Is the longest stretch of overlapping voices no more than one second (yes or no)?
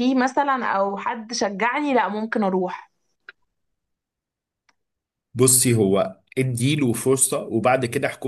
yes